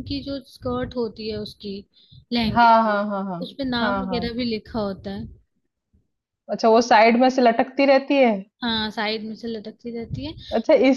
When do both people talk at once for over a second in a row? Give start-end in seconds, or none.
none